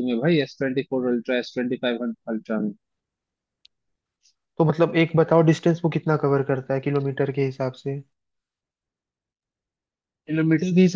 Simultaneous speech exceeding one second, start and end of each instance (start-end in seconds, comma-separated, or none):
none